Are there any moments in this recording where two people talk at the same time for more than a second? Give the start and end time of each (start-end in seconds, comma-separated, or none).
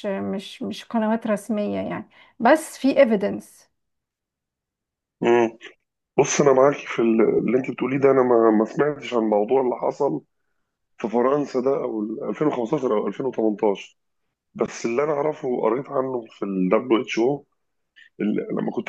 none